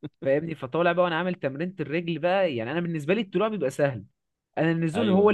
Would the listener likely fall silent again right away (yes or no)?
yes